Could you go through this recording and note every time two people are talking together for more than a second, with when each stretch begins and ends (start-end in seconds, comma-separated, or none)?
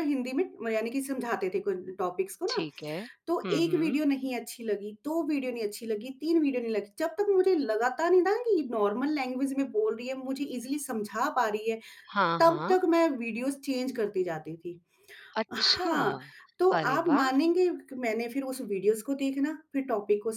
none